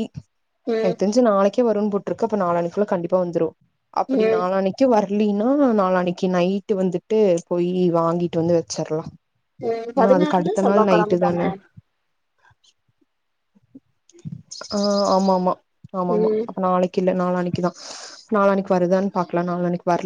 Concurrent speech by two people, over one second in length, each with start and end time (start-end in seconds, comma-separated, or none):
10.0-11.5